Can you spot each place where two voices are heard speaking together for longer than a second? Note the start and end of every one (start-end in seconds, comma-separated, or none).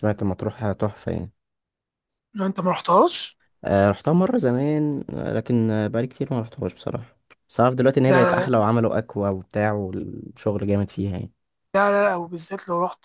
none